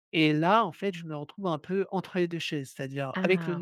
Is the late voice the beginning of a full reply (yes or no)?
no